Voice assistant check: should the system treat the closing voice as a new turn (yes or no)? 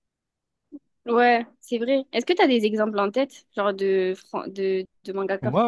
yes